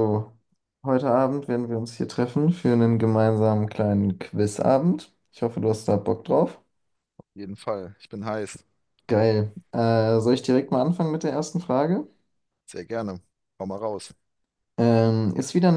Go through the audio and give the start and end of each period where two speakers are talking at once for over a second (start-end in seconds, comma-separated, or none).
none